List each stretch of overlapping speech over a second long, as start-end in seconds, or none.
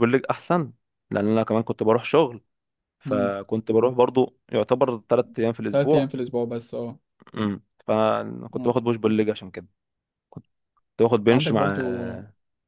none